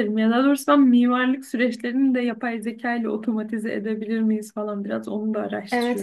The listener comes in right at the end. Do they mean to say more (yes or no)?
yes